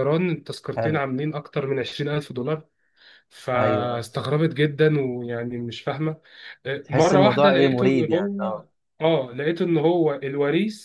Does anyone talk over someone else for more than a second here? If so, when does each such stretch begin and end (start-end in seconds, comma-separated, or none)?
6.8-8.4